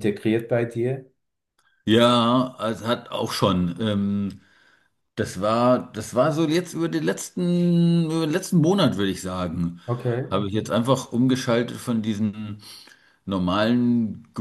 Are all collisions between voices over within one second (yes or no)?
yes